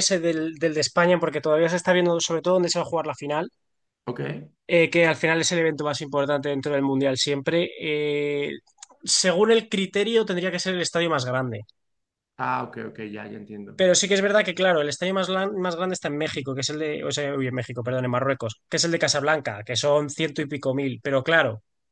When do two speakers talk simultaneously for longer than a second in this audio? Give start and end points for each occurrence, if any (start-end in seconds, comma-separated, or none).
none